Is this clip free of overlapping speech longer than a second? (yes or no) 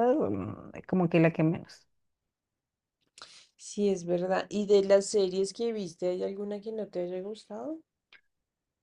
yes